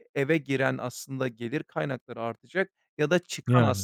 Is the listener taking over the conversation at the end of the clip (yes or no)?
no